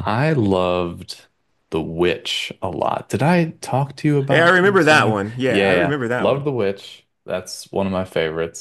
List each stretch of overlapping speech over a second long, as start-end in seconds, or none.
4.3-6.5